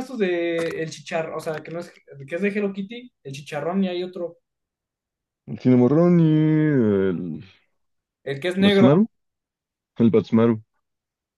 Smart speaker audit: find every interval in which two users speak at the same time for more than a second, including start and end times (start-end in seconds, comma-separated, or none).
none